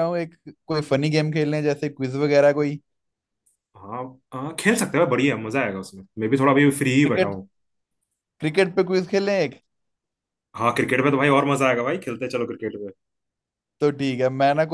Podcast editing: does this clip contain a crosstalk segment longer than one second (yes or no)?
no